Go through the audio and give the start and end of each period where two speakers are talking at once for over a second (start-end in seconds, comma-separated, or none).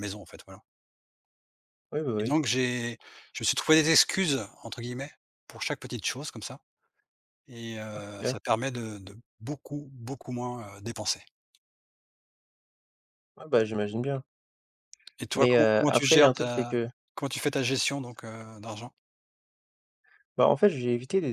15.3-16.8